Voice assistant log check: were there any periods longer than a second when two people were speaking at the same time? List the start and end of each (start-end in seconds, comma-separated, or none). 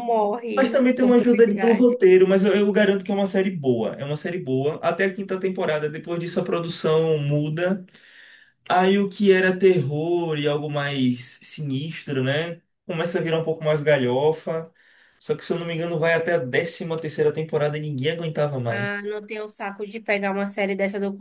0.6-2.0